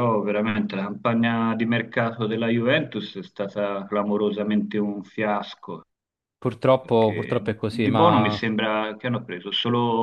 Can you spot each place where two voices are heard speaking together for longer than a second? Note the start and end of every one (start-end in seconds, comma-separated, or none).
6.8-8.4